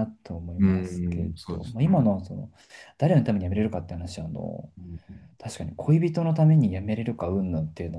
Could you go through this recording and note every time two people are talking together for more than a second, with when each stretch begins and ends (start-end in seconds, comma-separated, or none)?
0.6-2.1